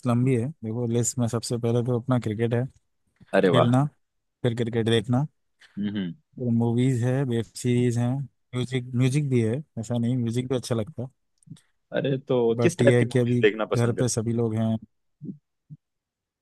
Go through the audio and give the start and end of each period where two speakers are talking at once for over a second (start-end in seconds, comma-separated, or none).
12.6-14.1